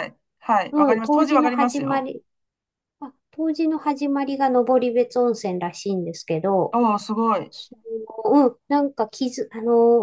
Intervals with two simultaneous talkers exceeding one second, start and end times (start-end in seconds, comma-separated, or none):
0.7-2.1